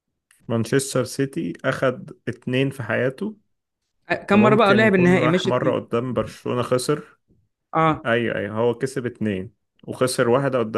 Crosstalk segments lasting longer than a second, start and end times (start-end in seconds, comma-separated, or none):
4.3-5.8